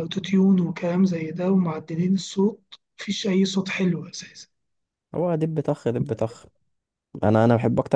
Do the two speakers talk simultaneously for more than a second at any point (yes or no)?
no